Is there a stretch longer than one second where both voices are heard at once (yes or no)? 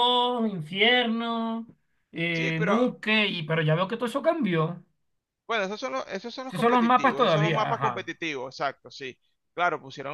yes